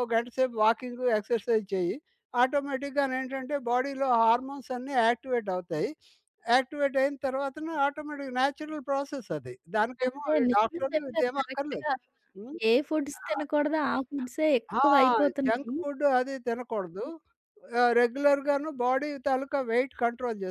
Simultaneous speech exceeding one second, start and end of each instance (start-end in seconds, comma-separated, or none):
10.0-11.9